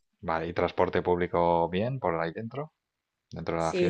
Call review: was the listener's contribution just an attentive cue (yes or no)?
no